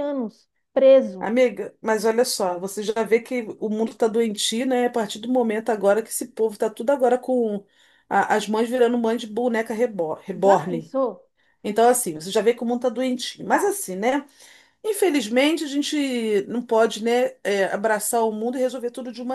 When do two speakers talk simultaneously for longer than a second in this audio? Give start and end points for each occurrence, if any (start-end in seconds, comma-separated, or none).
none